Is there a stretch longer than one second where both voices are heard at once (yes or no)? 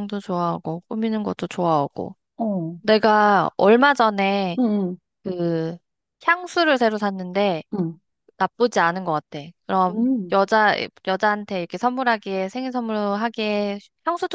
no